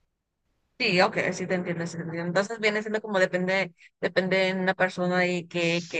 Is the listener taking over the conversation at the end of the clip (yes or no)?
no